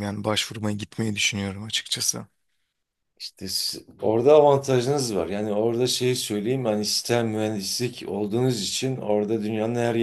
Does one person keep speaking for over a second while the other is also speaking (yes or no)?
no